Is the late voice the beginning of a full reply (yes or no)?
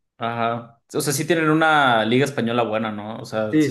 yes